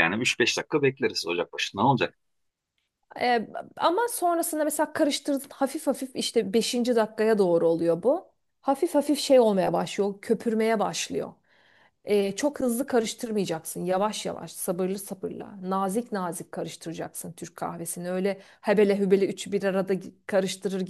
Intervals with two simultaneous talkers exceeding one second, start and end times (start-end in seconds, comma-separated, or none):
none